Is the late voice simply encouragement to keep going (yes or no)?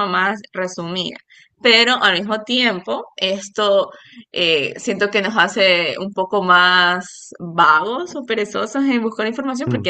yes